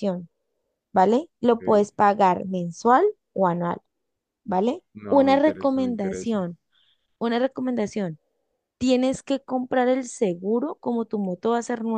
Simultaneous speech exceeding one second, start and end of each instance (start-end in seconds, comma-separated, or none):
5.0-6.4